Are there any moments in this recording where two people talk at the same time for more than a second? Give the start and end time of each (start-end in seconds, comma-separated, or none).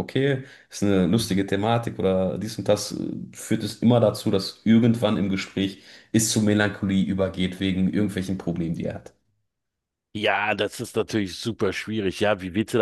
none